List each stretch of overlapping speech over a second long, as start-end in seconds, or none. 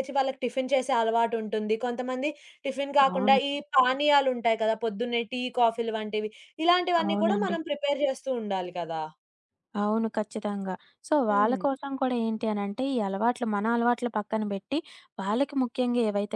none